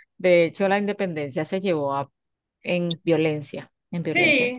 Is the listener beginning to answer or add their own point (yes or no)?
yes